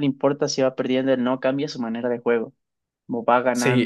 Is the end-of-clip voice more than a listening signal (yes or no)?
yes